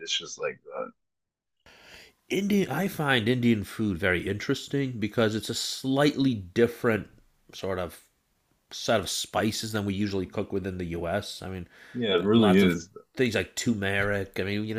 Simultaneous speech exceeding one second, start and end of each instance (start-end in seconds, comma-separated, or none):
none